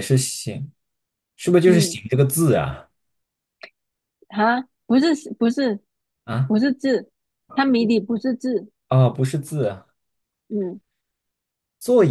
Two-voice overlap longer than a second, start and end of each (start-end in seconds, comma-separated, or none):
none